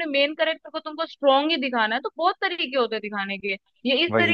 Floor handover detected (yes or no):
no